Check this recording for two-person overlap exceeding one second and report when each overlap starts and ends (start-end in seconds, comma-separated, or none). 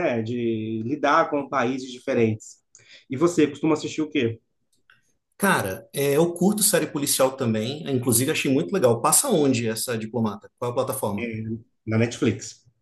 none